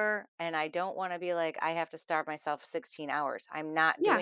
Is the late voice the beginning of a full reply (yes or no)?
yes